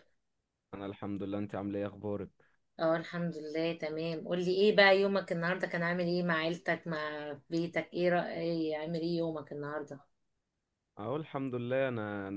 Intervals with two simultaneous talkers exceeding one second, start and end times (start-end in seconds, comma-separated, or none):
none